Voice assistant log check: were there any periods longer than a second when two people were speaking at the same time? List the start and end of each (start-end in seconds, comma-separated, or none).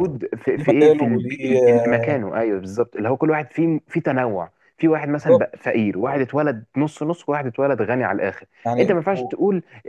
0.6-2.1